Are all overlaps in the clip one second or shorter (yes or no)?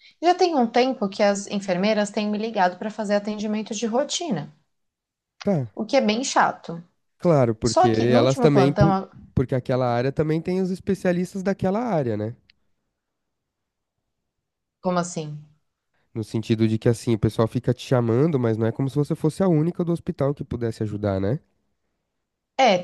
no